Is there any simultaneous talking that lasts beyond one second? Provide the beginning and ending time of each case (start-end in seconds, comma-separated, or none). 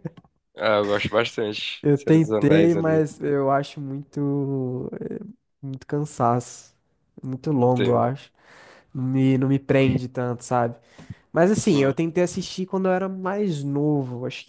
1.8-3.0